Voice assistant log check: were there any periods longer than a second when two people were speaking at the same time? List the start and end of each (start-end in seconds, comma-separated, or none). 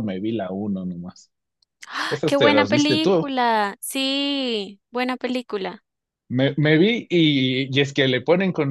2.1-3.3